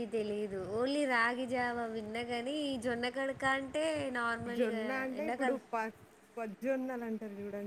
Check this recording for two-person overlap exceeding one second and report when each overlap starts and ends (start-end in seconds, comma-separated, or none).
none